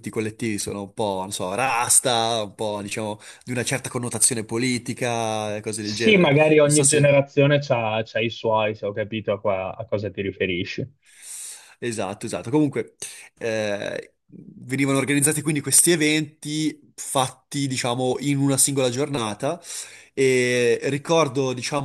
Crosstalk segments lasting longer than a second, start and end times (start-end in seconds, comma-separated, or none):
5.8-7.2